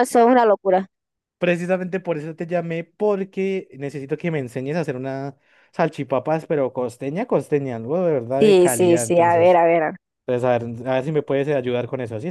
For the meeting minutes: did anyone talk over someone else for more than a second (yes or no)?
yes